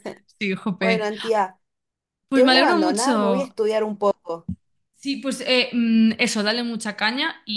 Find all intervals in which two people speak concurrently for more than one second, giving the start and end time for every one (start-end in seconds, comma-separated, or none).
2.3-3.5